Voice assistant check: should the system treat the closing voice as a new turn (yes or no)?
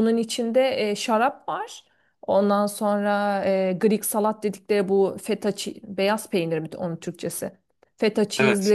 no